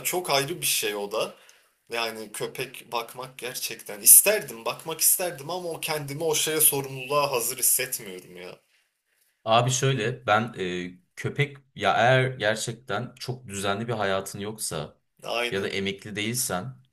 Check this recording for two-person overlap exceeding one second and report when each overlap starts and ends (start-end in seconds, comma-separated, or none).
none